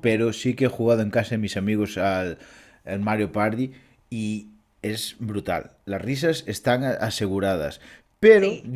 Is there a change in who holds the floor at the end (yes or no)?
no